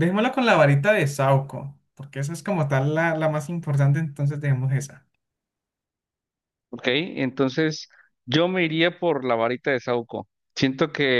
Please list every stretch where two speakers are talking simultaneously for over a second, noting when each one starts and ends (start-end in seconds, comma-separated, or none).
none